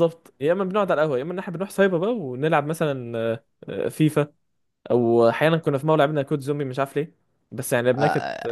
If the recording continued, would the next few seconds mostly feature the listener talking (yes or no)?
yes